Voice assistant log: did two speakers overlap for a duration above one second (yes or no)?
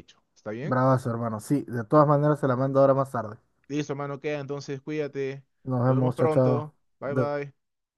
yes